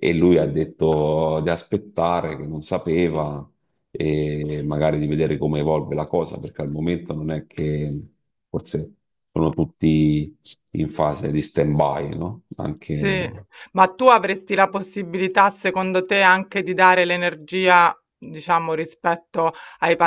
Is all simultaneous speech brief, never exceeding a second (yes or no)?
yes